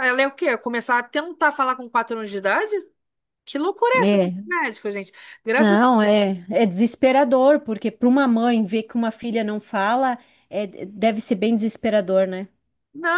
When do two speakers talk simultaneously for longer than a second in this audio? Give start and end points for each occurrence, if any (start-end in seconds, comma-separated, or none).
none